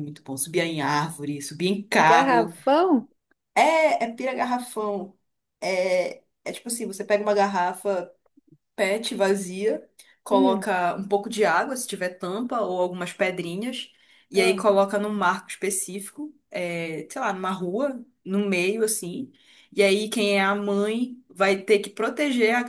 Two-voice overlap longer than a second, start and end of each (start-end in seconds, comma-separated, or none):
none